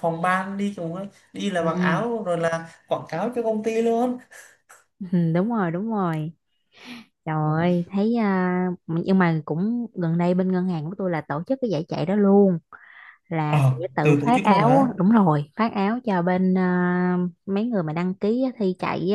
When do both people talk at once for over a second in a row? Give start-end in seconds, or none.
13.5-14.9